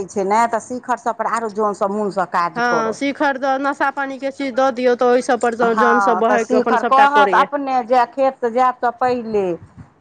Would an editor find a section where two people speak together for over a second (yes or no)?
yes